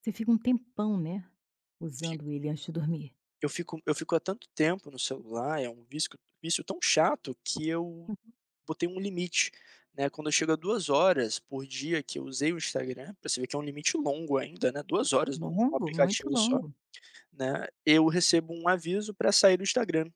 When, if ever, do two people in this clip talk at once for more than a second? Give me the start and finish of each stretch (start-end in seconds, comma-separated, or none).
15.3-16.6